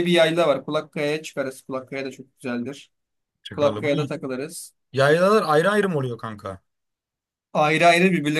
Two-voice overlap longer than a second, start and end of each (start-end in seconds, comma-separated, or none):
none